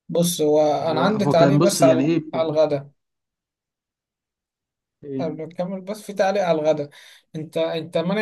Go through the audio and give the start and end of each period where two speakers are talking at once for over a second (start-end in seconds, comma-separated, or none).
0.9-2.2